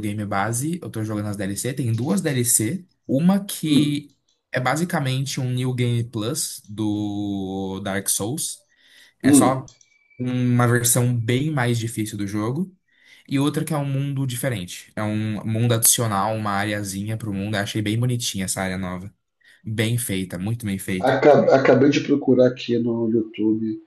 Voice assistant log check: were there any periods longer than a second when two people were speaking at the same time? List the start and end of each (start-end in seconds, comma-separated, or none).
none